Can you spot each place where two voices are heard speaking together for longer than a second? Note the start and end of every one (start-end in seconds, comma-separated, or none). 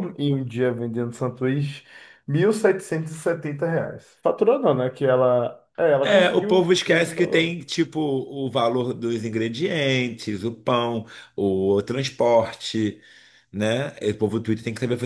6.0-7.5